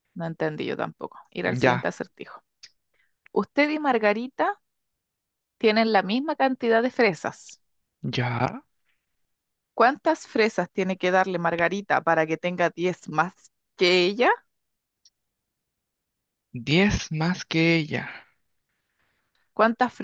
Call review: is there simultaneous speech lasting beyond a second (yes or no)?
no